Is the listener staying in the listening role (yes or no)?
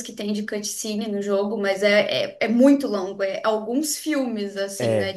yes